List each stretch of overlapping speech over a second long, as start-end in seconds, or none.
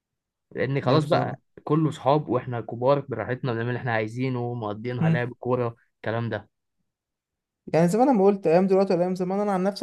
none